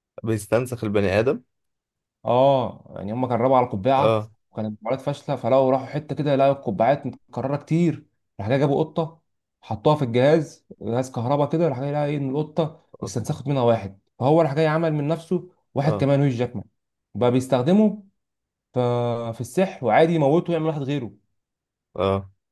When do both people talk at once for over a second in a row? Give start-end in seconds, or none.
none